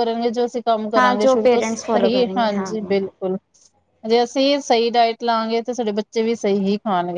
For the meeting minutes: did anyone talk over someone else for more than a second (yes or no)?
yes